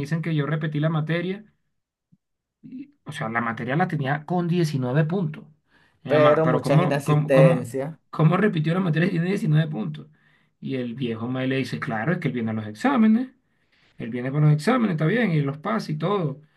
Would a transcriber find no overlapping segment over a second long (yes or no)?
no